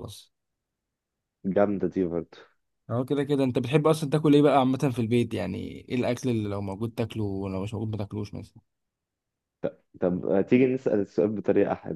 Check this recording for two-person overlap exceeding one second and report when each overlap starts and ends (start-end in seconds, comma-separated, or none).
none